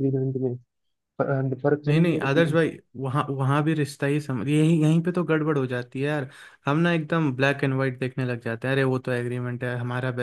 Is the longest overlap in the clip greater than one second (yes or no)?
no